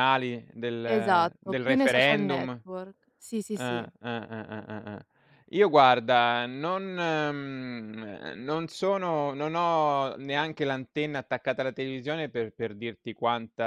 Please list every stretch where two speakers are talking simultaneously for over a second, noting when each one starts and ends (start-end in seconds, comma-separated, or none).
0.8-2.5